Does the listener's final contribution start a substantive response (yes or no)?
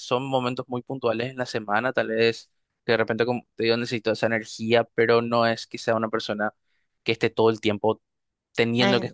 yes